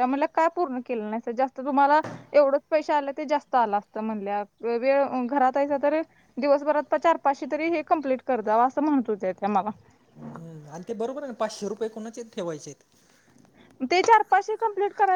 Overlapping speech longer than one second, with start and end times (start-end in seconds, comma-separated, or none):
none